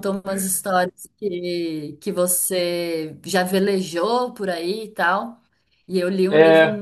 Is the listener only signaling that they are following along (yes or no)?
yes